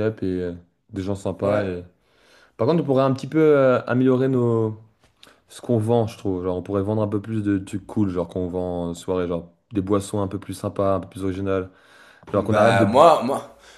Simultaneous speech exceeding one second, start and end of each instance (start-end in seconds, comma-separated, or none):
none